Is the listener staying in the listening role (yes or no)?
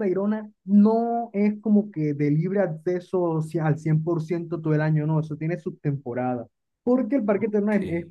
yes